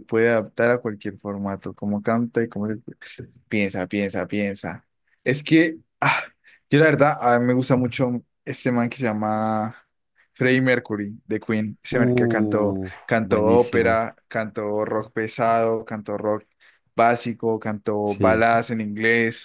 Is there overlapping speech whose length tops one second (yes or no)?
yes